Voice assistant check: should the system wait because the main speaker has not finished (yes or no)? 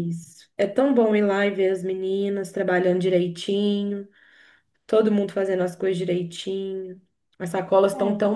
yes